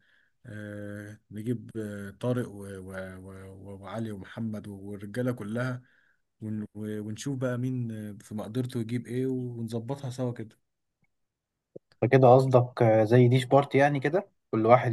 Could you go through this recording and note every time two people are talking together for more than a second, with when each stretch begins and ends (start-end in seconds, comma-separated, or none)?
none